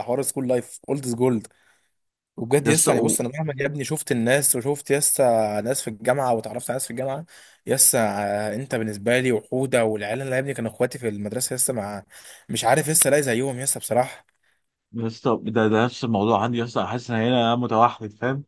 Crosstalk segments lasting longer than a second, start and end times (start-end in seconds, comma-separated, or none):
none